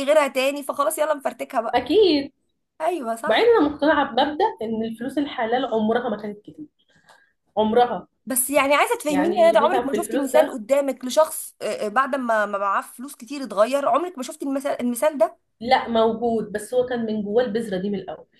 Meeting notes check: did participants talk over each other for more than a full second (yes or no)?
yes